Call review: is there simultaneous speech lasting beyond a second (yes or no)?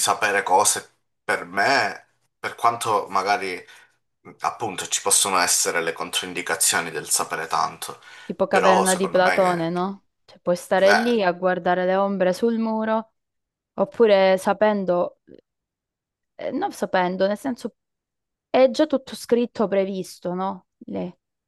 yes